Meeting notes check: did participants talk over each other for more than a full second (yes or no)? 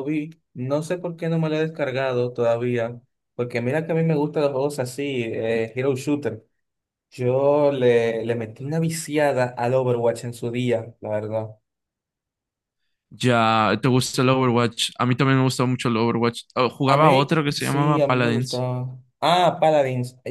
yes